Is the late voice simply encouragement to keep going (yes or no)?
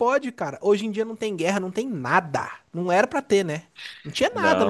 yes